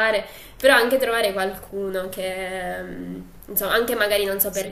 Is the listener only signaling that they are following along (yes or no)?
yes